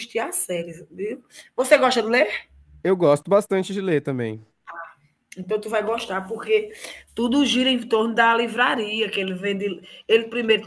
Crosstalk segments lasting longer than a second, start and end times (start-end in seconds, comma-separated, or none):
none